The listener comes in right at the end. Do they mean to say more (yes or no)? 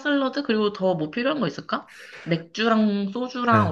yes